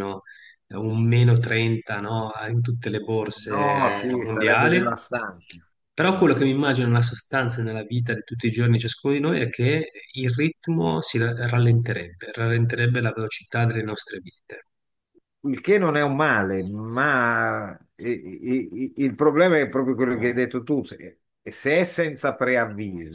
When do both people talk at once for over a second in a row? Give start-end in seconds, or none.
3.4-4.8